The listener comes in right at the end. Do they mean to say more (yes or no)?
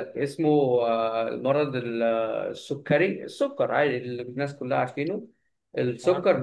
no